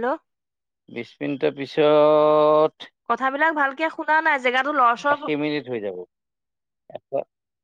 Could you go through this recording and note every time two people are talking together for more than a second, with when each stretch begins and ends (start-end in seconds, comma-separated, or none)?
none